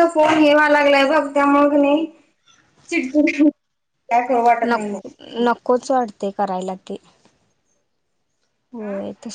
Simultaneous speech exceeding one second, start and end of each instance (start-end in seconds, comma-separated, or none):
none